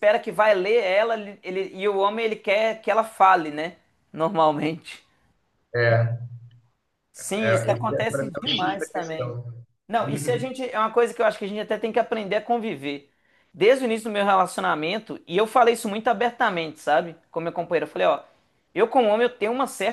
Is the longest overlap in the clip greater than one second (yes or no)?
yes